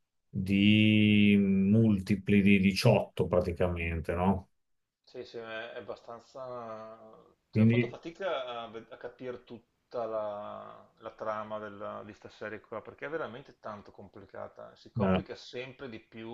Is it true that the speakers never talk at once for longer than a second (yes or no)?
yes